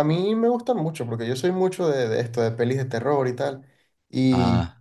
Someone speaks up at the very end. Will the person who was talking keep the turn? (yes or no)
yes